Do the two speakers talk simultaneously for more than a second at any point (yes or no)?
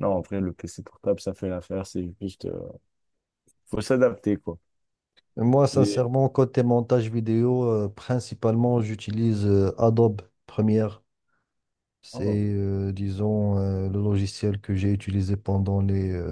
no